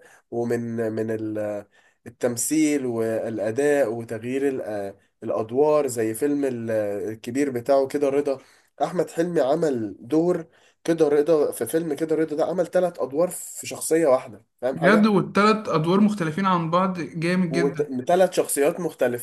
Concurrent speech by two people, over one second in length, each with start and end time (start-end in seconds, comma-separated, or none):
none